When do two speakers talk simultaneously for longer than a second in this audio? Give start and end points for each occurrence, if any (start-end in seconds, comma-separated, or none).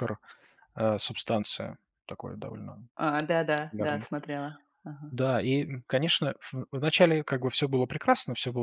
none